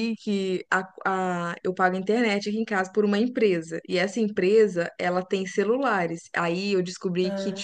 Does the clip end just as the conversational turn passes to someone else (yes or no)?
no